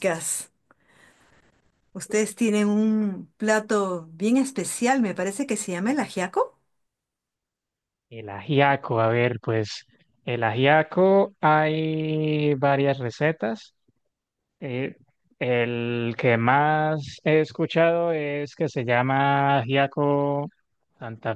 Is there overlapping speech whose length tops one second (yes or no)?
no